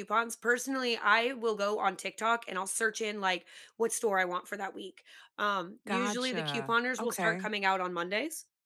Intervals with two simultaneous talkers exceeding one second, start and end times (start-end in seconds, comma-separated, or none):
5.9-7.5